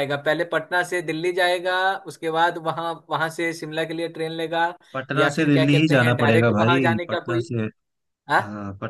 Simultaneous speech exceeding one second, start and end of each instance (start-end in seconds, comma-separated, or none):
5.2-7.5